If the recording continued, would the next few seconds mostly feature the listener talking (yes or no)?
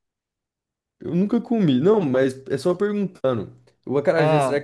no